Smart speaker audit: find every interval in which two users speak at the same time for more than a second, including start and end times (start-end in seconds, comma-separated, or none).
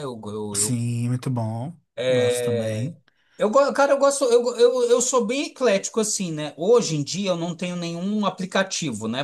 none